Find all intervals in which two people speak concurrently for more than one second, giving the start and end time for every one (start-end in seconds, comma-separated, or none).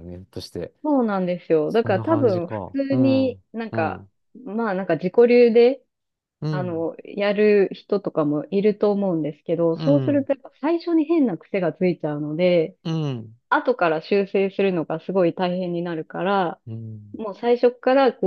1.7-4.0